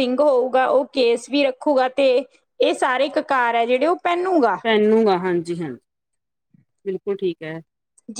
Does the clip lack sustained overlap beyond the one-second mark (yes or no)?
yes